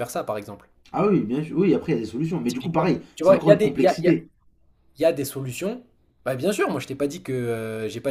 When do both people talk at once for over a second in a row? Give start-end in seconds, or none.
2.5-4.2